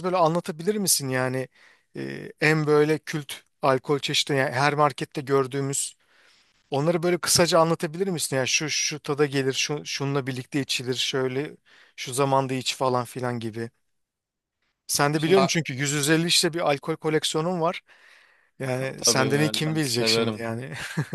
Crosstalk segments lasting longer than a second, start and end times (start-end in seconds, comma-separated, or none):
19.0-20.5